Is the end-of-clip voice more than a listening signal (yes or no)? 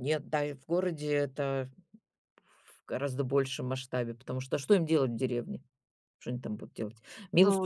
yes